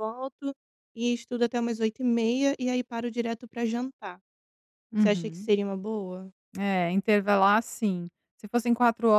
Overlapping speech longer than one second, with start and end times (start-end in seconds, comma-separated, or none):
none